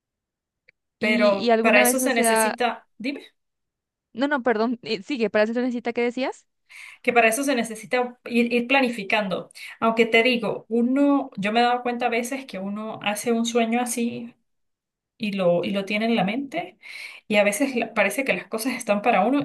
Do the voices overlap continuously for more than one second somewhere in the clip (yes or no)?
yes